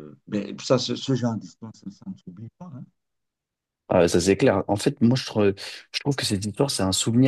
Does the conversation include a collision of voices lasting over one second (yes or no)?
no